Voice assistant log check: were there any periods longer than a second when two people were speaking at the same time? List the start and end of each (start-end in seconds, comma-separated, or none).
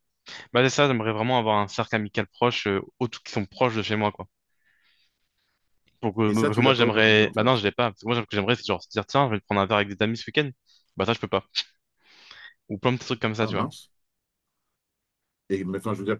6.3-7.5